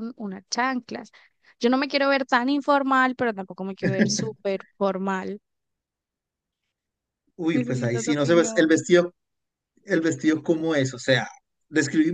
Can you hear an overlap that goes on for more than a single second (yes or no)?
yes